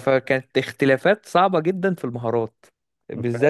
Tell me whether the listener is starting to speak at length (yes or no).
no